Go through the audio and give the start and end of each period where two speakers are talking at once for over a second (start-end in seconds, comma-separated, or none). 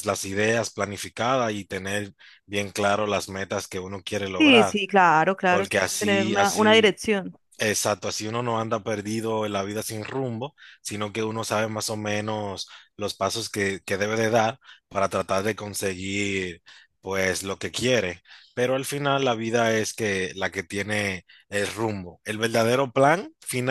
5.5-7.0